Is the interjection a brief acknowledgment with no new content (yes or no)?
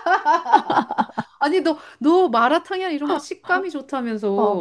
no